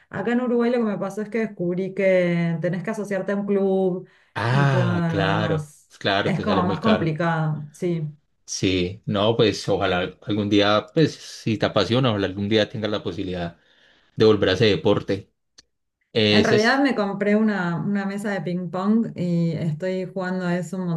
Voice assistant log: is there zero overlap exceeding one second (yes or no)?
no